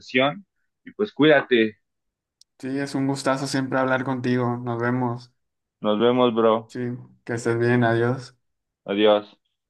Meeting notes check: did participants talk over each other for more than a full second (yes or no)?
no